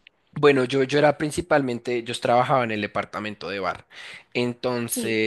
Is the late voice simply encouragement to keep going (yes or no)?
yes